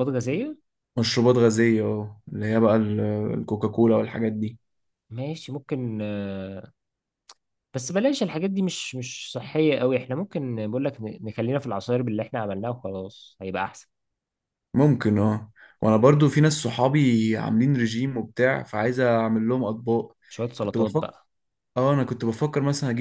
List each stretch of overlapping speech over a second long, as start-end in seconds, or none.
none